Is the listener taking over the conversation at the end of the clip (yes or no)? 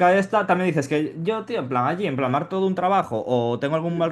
no